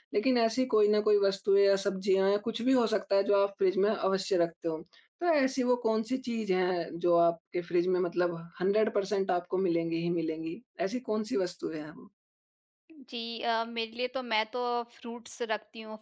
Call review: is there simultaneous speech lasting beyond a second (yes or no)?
no